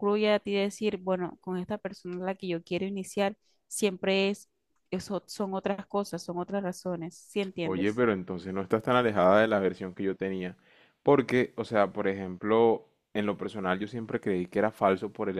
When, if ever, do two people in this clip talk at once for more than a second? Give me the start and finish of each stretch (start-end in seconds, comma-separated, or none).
none